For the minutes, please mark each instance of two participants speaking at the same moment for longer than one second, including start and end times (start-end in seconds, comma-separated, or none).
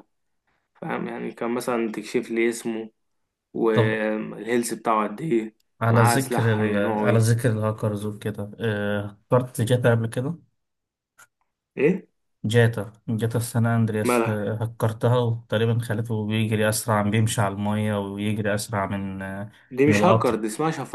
5.8-7.3